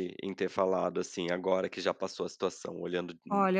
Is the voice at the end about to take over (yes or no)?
yes